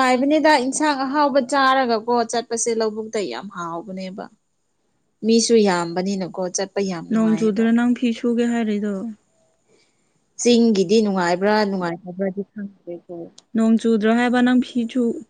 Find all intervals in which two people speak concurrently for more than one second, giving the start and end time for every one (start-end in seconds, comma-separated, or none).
none